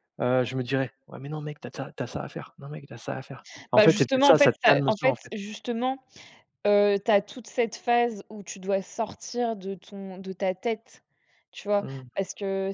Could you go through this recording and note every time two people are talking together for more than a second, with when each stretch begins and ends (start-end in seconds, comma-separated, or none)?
3.7-5.3